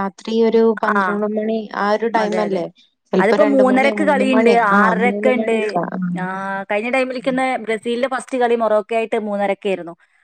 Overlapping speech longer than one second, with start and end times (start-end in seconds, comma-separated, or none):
3.2-5.6